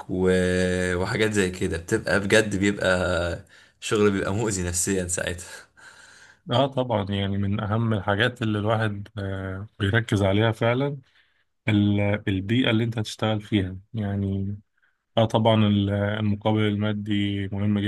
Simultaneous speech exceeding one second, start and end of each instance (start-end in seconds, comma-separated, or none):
none